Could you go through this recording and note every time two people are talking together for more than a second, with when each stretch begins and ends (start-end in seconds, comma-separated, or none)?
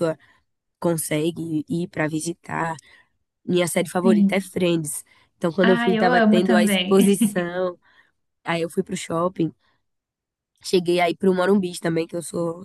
5.6-7.5